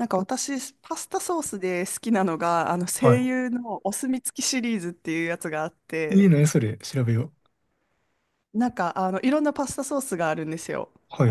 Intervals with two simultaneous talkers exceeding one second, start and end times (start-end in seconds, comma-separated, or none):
none